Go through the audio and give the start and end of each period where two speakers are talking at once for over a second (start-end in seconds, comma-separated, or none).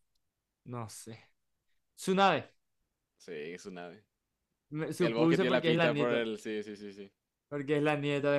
5.0-6.3